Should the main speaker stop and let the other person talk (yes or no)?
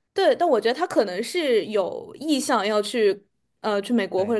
yes